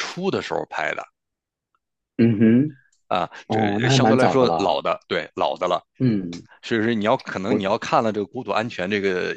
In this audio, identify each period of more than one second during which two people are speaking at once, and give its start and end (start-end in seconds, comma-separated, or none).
3.5-4.8